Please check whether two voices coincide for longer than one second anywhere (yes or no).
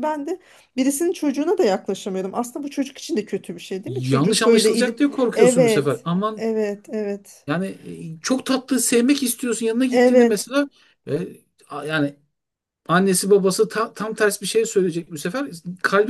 yes